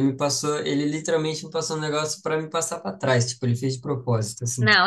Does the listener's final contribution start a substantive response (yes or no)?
yes